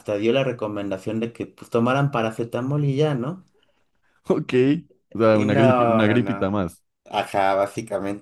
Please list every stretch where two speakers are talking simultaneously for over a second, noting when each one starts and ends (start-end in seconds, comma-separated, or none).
5.3-6.5